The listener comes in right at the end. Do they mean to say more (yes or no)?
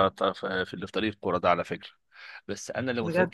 no